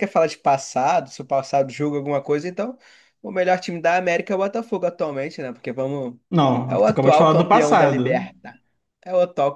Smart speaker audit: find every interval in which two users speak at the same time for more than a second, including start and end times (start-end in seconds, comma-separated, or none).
6.7-8.3